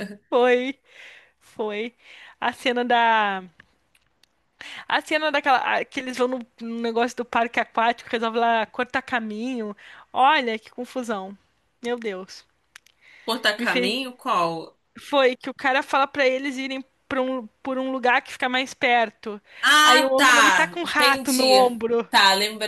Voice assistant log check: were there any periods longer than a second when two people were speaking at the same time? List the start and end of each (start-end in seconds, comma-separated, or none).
19.8-22.1